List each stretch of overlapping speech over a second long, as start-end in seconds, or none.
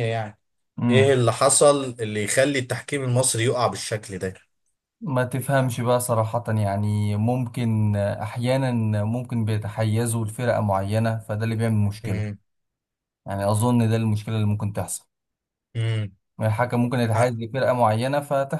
none